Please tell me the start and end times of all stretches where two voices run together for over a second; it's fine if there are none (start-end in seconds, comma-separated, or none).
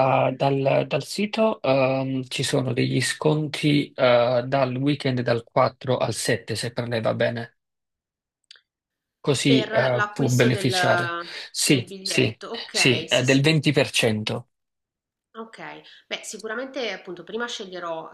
9.4-10.7, 11.7-13.4